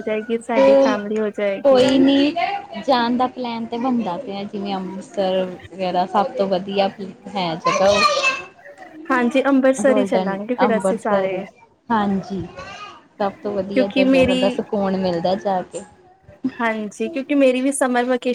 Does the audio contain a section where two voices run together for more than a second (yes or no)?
yes